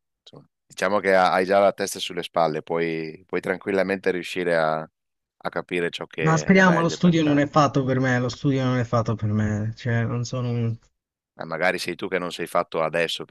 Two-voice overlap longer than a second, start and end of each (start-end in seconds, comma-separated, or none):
6.2-7.4